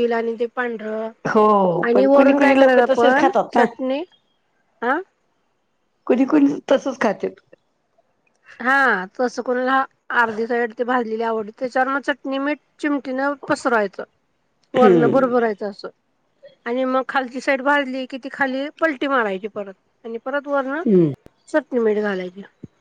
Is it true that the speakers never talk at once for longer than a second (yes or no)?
no